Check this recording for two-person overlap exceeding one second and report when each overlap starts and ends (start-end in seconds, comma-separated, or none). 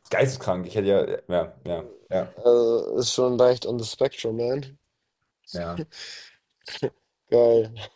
none